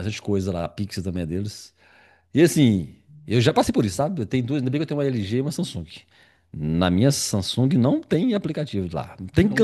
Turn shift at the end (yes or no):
no